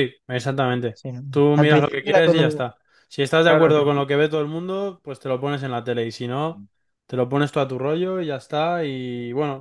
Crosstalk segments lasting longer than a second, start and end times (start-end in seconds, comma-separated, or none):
0.9-2.6